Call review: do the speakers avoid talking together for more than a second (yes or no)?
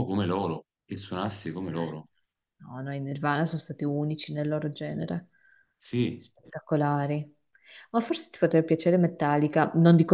yes